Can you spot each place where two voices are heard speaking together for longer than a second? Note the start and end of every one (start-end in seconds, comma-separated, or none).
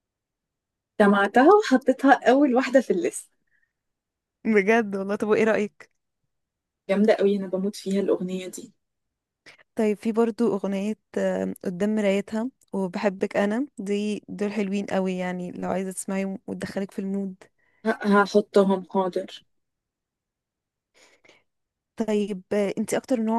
none